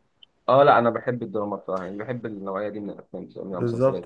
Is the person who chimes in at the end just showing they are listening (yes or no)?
no